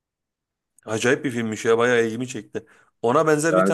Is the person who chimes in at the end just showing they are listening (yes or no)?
yes